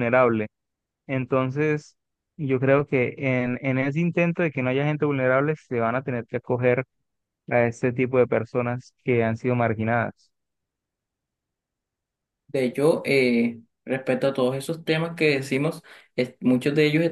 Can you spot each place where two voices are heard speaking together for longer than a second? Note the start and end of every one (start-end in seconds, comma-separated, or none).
none